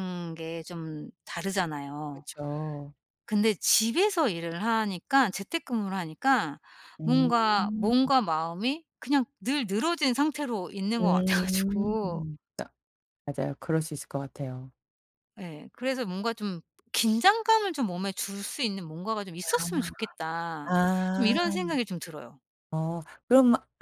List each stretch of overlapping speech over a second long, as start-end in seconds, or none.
11.0-12.3